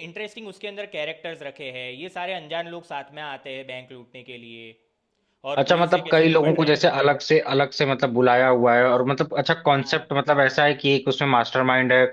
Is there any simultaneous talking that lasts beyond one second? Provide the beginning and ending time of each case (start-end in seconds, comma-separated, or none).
5.6-6.8